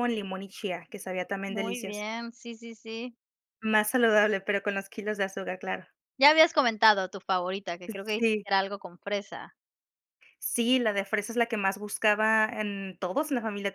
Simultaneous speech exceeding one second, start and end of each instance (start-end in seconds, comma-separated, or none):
none